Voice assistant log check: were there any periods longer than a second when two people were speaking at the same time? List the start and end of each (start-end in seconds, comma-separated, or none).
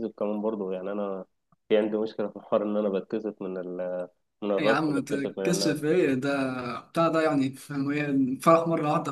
4.6-5.9